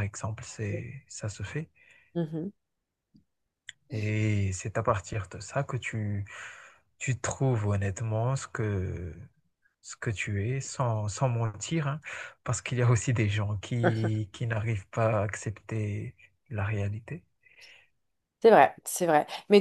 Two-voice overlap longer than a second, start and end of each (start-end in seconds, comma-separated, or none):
none